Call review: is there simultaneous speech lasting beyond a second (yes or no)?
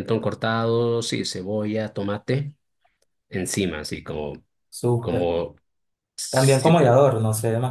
no